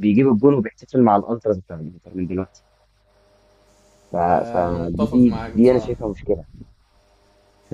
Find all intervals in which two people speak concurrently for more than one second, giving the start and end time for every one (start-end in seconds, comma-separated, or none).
4.5-5.9